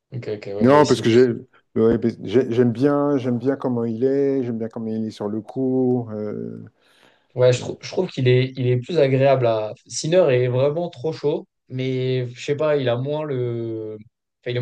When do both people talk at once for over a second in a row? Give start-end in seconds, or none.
none